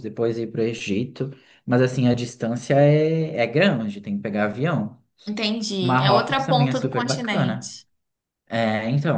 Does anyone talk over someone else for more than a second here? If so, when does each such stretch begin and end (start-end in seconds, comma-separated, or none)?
5.8-7.7